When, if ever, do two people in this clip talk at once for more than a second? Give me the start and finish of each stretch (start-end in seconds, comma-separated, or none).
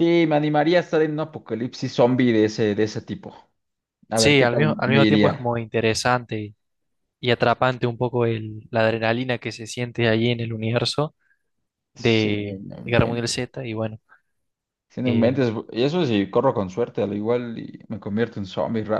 4.1-5.5, 11.9-13.5